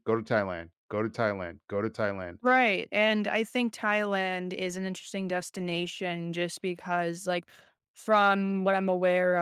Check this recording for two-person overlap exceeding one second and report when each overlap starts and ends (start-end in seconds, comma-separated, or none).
none